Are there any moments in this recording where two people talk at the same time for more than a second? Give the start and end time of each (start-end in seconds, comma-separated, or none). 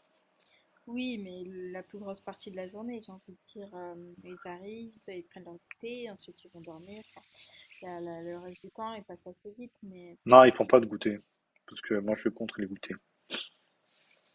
none